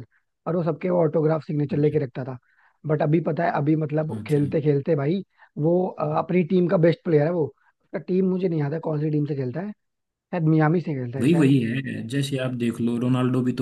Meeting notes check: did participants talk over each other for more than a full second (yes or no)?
no